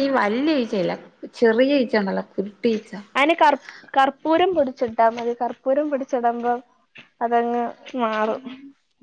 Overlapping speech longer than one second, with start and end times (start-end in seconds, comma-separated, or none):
none